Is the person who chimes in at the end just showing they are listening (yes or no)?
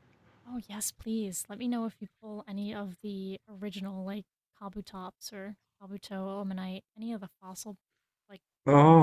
no